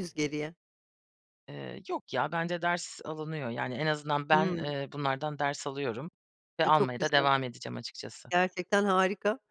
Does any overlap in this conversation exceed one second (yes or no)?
no